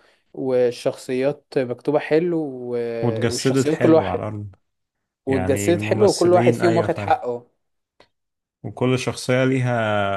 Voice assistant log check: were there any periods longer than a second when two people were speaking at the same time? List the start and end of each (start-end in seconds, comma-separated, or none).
3.0-4.2, 5.3-7.2